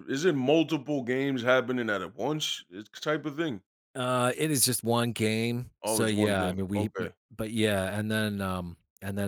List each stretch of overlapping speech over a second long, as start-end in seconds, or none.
5.8-7.1